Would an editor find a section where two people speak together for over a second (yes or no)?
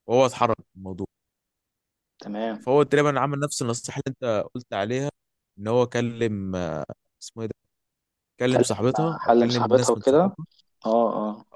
yes